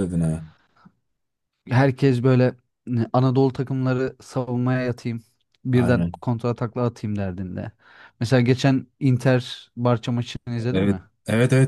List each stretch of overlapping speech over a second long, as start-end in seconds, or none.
none